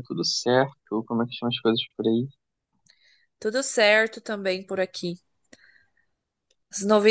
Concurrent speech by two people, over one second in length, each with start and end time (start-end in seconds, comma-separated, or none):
none